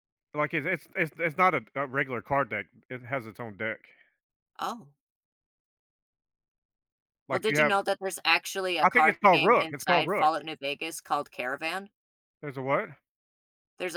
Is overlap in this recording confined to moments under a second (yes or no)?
no